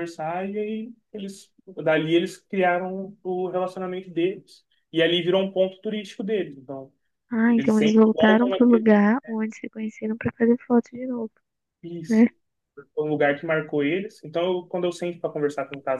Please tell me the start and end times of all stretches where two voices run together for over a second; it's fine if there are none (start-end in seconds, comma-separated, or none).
7.5-8.9